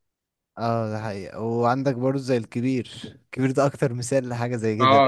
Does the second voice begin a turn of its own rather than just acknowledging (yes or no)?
yes